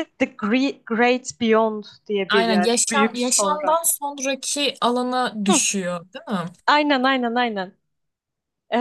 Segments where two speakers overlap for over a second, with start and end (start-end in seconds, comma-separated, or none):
2.3-3.8